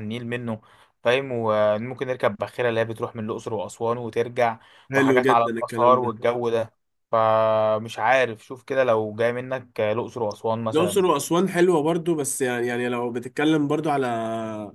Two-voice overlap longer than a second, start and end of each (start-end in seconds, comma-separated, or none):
5.0-6.2